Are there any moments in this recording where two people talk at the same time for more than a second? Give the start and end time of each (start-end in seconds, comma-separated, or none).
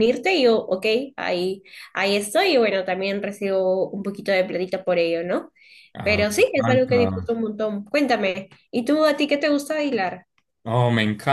6.0-7.3